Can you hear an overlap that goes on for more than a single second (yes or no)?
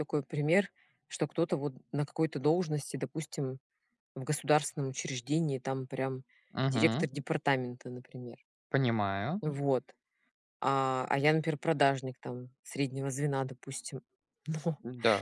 no